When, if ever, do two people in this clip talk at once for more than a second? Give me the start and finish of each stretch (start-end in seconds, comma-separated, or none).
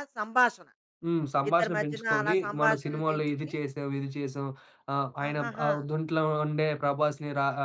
1.5-3.5